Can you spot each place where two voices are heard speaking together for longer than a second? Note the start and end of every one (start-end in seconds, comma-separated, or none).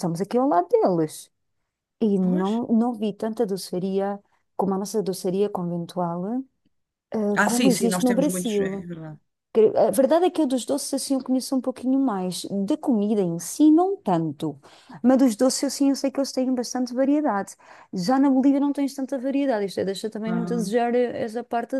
7.3-8.9